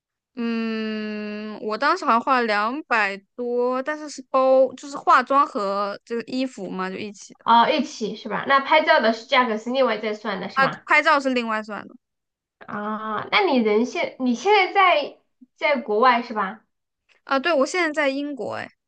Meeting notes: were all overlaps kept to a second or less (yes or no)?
yes